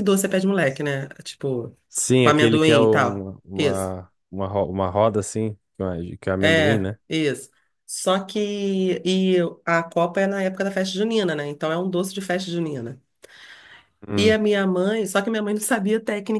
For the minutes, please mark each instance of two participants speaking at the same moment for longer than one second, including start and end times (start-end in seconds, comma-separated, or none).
2.2-3.9